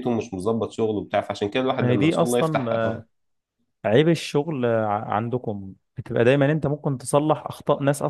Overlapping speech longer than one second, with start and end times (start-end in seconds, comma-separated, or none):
1.8-3.0